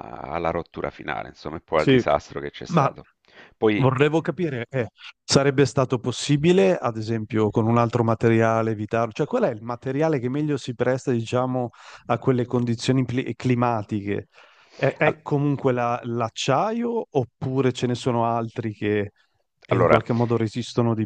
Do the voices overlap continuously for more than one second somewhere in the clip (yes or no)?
no